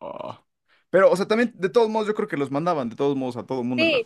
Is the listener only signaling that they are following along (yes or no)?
no